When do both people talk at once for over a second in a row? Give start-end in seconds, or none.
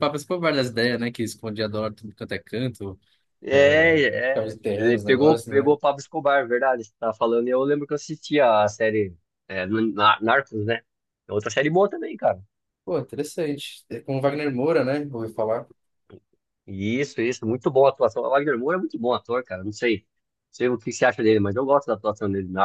3.5-5.8